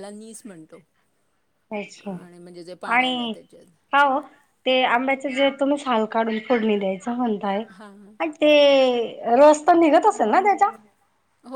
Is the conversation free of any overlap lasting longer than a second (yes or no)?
yes